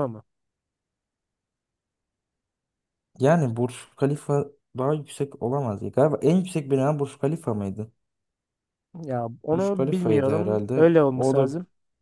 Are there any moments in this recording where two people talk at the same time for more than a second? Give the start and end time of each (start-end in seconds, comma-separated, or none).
9.5-11.5